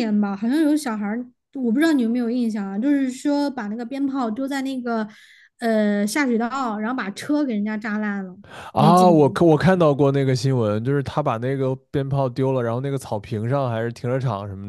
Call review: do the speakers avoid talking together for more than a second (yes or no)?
yes